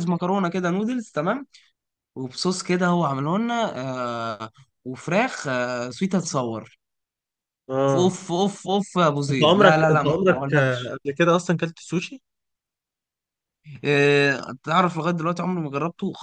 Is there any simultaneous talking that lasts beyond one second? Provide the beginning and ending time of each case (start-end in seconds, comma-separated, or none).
9.3-10.9